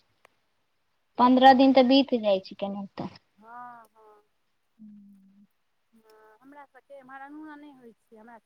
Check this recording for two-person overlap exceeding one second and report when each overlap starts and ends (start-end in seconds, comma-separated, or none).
none